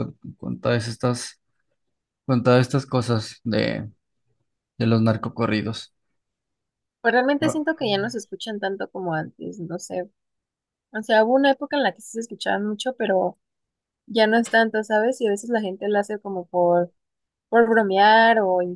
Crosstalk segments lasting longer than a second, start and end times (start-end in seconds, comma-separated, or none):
none